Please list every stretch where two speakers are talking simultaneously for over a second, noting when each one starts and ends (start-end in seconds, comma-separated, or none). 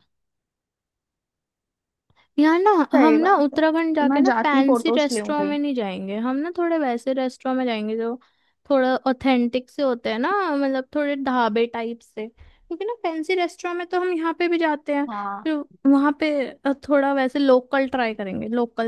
2.9-5.6